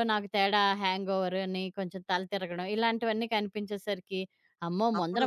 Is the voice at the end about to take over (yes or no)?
no